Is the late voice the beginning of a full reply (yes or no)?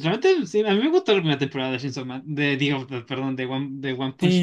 yes